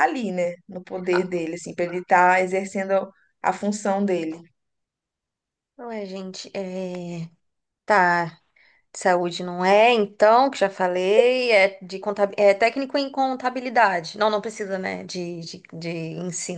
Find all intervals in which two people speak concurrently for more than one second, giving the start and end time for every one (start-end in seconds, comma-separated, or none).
none